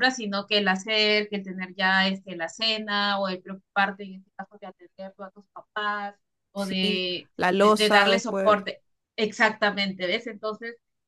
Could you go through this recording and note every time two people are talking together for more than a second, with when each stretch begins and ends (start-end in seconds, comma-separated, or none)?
6.5-8.6